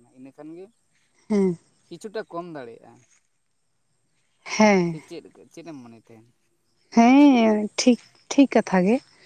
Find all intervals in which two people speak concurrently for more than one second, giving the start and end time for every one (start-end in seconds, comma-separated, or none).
none